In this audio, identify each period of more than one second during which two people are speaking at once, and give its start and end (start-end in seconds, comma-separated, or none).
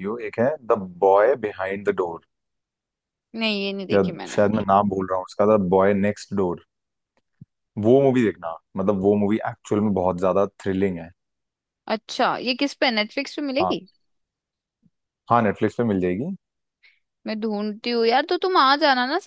none